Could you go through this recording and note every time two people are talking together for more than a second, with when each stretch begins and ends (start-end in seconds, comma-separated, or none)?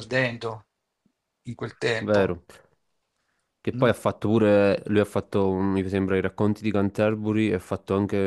none